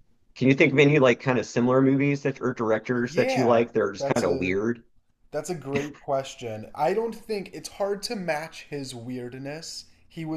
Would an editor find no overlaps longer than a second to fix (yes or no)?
no